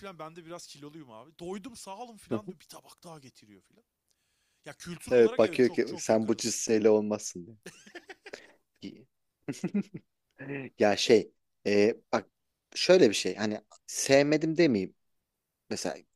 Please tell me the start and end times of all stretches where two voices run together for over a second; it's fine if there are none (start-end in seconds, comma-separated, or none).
5.1-6.6